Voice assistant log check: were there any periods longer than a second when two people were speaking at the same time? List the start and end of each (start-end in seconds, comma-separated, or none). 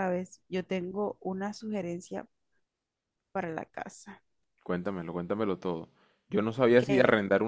none